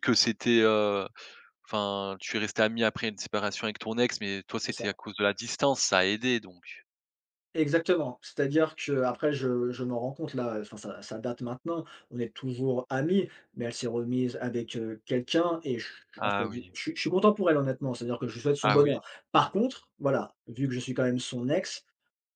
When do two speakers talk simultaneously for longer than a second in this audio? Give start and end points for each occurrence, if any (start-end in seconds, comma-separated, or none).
none